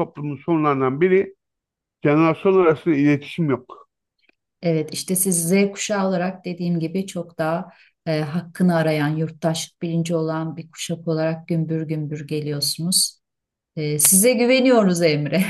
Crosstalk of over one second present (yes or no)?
no